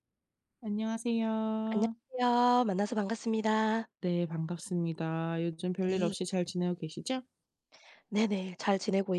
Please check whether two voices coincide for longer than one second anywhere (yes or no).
no